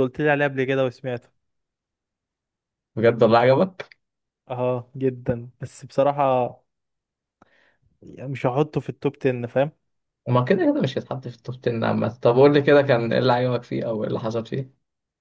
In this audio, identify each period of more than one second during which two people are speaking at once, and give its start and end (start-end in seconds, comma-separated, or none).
none